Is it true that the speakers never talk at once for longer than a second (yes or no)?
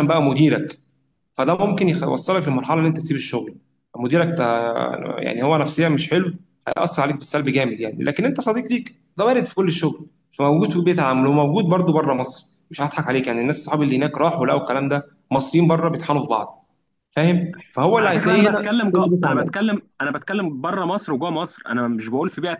no